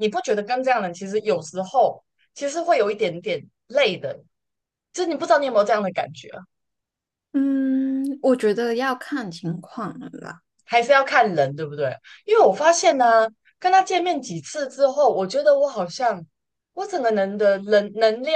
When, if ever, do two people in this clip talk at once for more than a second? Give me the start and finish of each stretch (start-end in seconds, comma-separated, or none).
none